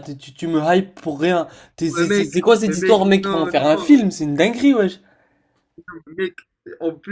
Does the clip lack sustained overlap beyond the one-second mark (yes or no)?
no